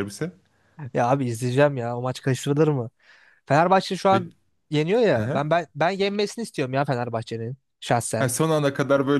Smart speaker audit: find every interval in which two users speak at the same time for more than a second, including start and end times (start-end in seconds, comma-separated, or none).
none